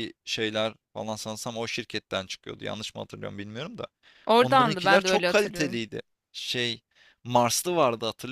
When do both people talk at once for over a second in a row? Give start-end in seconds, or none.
4.4-5.8